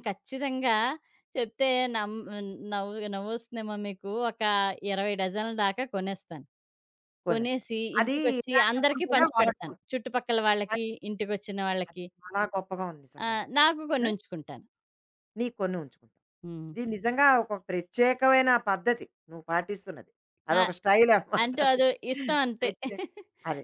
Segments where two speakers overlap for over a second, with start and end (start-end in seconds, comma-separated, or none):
7.3-9.8